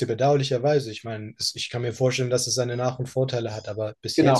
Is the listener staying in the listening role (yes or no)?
no